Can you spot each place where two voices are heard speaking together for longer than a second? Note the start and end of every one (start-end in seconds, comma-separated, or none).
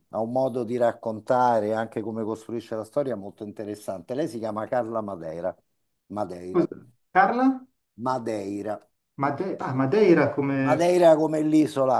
none